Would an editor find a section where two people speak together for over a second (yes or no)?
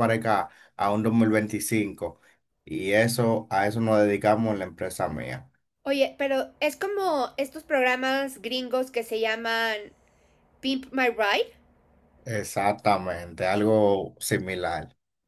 no